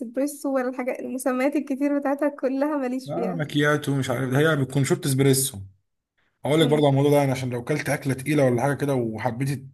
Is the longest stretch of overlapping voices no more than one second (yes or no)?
yes